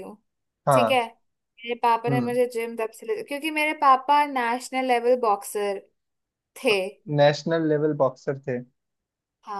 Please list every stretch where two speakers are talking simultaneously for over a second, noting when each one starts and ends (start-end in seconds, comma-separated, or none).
none